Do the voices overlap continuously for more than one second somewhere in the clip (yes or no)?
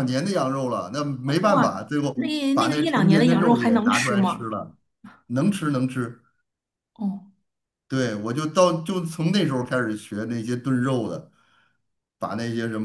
yes